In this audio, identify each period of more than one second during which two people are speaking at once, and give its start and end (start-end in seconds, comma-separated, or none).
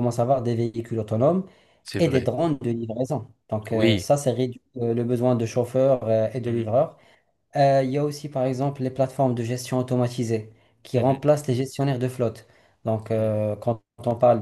none